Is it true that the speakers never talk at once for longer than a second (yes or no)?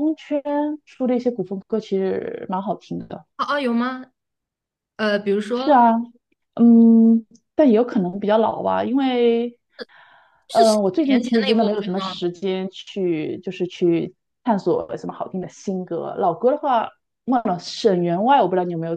no